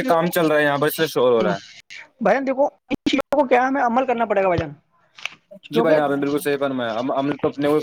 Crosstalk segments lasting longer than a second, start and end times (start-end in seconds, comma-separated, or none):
none